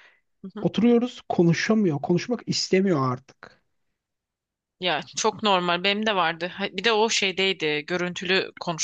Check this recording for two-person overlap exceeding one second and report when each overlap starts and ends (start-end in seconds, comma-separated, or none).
none